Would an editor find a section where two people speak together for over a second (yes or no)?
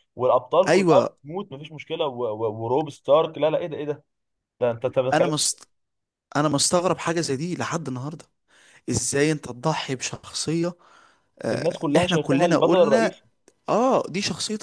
yes